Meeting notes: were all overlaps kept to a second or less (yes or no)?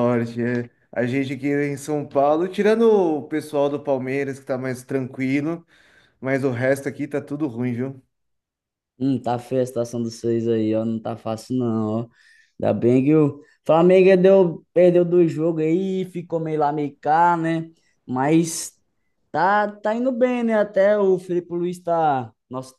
yes